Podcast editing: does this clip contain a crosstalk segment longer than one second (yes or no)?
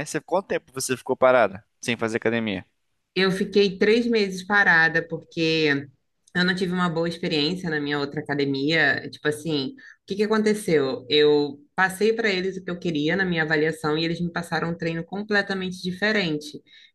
no